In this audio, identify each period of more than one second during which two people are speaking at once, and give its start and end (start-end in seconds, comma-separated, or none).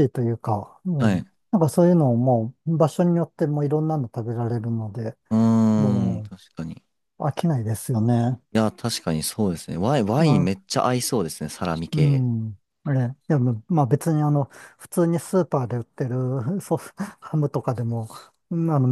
none